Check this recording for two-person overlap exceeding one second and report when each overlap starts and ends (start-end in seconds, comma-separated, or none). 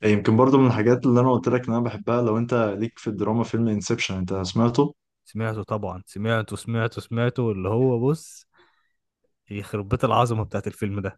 none